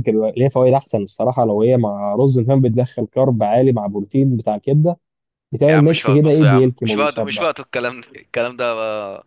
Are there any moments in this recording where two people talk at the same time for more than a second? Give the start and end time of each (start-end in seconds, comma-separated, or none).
5.7-7.5